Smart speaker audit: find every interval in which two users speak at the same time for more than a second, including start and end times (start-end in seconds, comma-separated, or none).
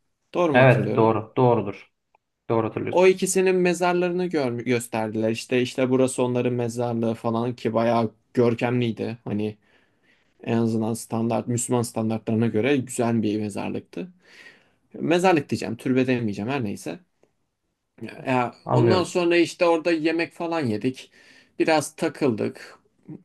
none